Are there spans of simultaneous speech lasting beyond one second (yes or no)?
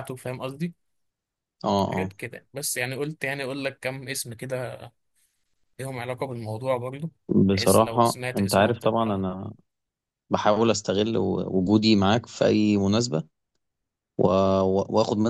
yes